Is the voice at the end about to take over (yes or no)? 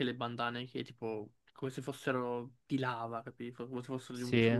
no